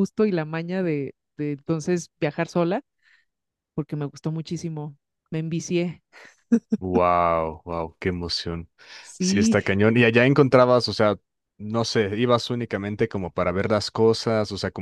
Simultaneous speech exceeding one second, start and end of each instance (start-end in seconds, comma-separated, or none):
none